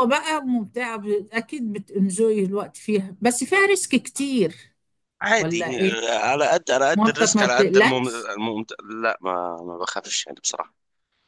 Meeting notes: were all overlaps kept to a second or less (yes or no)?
no